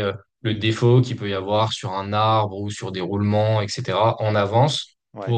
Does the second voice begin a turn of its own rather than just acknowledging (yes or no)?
no